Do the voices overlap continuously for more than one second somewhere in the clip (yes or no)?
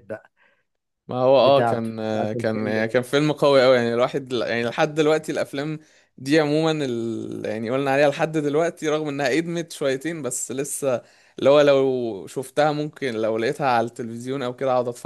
yes